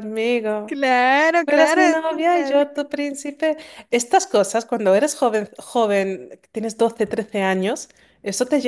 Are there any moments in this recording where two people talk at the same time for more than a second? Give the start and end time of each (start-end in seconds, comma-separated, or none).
1.4-2.8